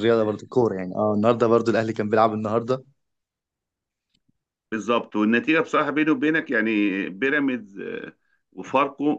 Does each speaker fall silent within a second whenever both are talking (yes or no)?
yes